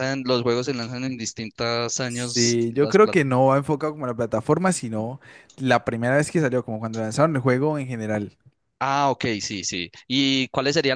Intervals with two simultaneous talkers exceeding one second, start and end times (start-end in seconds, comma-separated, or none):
2.0-3.4